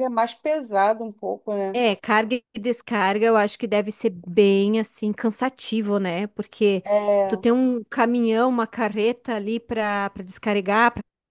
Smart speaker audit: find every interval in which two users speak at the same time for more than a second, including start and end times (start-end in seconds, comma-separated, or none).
none